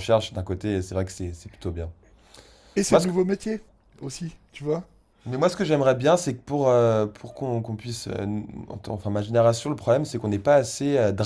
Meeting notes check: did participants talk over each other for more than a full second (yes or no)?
no